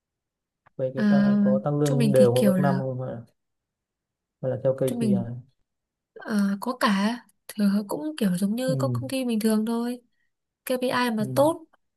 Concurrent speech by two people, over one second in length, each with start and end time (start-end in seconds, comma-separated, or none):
0.9-2.8